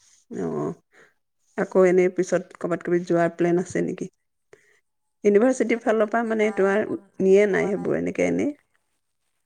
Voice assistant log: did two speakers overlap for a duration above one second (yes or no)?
yes